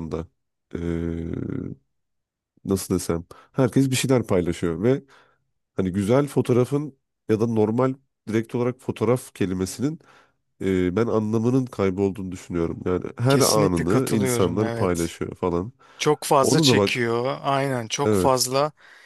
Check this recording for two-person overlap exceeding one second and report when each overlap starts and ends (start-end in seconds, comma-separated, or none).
13.3-15.1